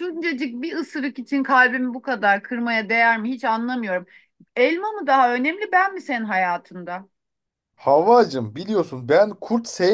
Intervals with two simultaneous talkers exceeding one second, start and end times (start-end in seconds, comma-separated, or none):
none